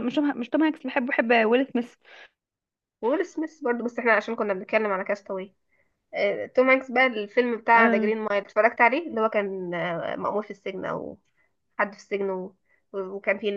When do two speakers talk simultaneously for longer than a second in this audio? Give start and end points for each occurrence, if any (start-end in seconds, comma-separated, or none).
none